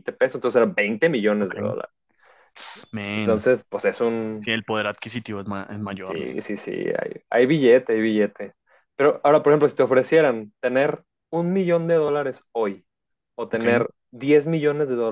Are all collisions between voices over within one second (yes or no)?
yes